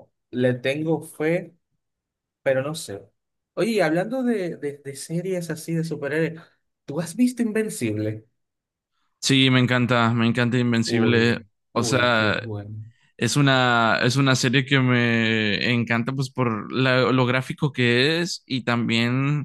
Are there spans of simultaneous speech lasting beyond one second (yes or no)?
yes